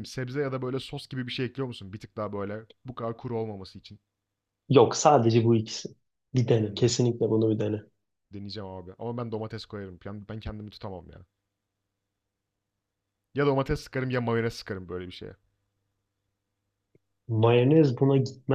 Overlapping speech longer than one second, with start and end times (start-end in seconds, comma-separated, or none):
none